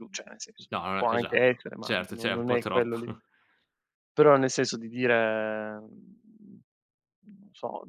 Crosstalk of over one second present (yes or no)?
yes